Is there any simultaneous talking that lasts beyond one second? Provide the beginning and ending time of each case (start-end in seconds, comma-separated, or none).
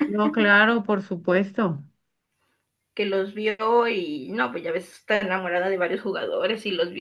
none